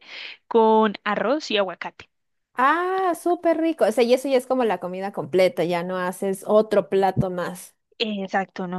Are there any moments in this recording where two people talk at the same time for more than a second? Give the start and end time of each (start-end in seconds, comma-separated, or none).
none